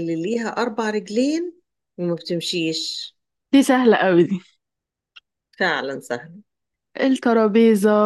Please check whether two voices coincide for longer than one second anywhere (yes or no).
no